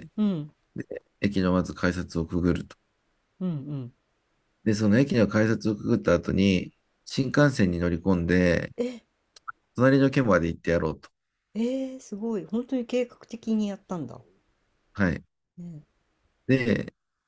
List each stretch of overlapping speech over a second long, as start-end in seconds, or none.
none